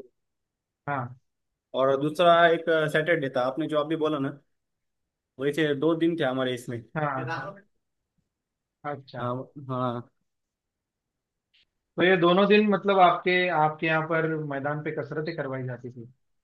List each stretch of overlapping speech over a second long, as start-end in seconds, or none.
none